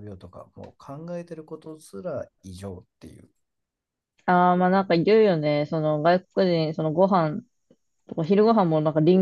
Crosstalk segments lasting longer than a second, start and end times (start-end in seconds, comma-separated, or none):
none